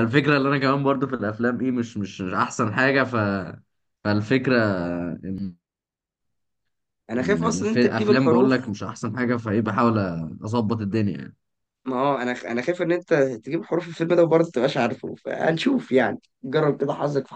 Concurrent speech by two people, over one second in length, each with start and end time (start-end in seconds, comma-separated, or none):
7.2-8.5